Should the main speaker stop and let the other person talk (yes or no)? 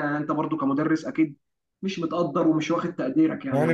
yes